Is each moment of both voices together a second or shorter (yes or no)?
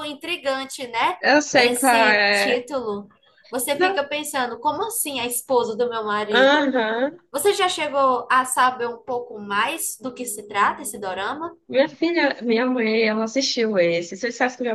no